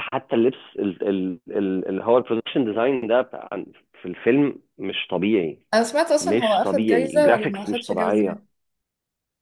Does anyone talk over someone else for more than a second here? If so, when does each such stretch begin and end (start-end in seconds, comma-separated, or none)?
6.2-8.2